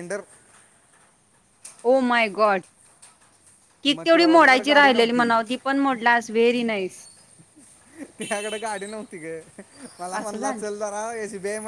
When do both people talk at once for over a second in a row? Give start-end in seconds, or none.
3.9-5.3